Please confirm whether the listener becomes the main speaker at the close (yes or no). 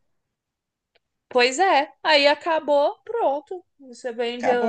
no